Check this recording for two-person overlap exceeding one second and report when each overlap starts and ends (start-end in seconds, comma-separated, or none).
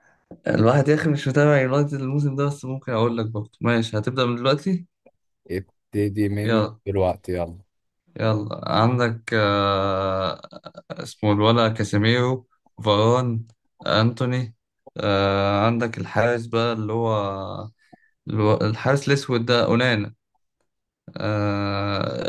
none